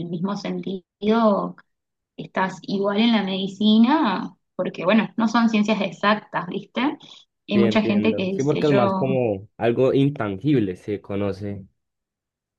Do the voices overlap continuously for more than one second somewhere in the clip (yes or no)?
yes